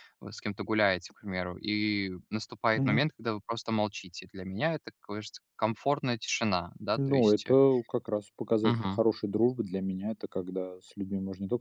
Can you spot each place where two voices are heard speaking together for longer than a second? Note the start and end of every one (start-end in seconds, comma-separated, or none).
none